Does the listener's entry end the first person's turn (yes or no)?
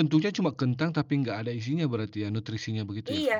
yes